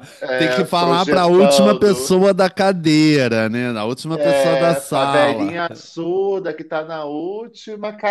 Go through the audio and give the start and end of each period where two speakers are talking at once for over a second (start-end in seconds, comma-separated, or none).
0.8-2.1, 4.1-5.6